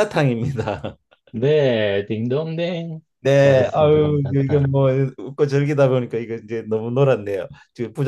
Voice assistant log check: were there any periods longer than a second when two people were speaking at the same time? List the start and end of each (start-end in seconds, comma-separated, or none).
3.4-4.8